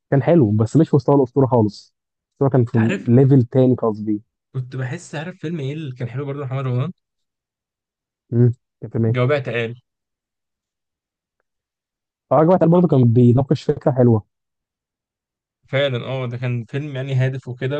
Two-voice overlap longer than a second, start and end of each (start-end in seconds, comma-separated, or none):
none